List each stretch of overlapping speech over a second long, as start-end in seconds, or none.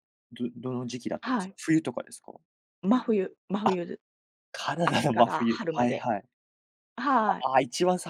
4.8-6.1